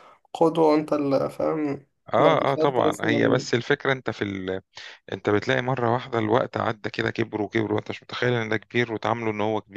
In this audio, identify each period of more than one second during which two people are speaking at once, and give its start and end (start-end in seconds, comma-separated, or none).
2.2-3.5